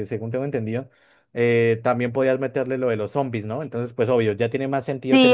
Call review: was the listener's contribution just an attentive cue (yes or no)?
no